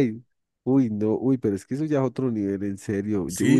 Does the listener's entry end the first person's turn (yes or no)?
yes